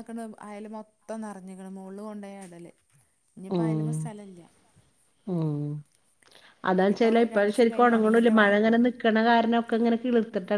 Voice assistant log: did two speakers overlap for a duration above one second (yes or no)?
yes